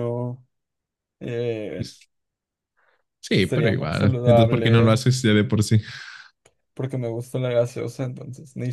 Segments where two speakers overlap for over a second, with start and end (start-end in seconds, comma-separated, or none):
3.3-5.0